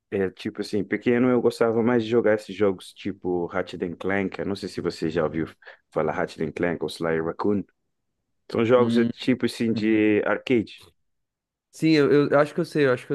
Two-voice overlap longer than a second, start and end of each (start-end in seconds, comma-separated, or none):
none